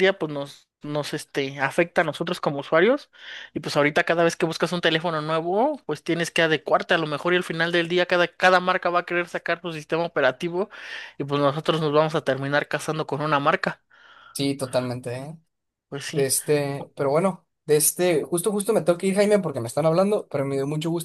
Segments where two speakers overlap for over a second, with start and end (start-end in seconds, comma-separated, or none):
none